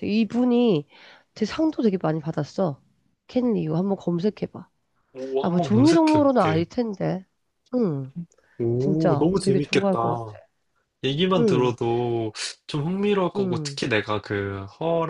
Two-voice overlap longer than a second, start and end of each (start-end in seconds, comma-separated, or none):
5.4-6.7, 8.8-10.4